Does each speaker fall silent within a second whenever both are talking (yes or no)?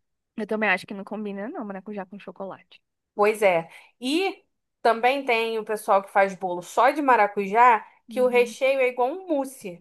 yes